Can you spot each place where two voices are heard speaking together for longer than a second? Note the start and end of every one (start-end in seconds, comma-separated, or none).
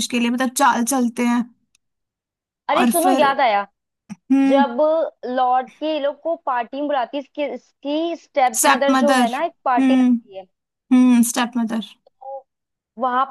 8.6-10.1